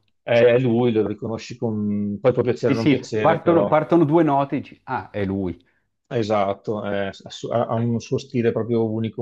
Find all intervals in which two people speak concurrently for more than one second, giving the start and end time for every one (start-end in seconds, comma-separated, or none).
2.5-3.8